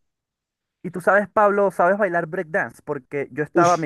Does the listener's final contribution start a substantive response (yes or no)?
no